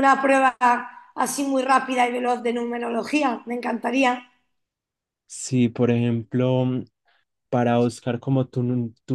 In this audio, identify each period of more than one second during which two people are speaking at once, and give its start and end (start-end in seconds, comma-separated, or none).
none